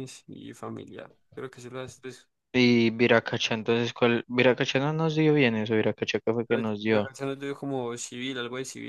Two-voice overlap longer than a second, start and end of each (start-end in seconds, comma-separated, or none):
none